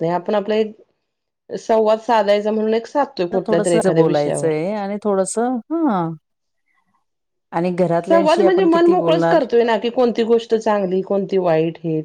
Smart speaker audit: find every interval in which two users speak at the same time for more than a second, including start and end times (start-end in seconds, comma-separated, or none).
none